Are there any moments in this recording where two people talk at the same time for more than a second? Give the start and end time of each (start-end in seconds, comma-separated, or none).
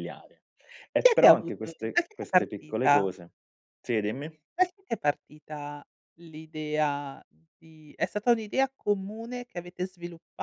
1.0-3.1